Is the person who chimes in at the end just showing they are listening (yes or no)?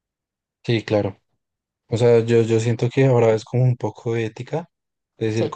yes